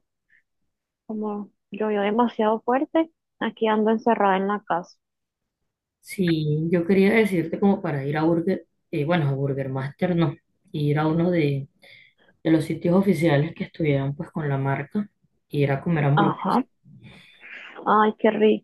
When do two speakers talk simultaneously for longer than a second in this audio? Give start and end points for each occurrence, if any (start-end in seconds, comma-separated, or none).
none